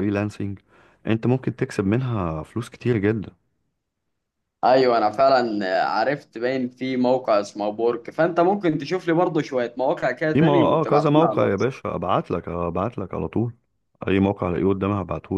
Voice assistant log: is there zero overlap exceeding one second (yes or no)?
no